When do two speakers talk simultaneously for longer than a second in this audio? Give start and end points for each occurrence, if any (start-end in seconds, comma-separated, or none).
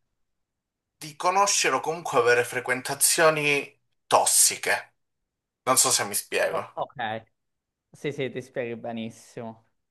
none